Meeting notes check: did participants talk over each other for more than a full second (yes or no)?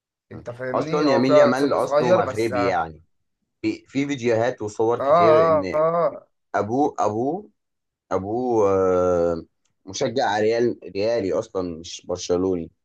yes